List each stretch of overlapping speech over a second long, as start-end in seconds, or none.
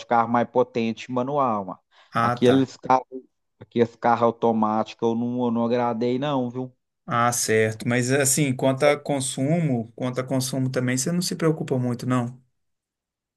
none